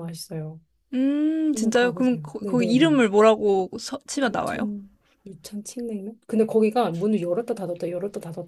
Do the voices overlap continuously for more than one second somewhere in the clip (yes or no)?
yes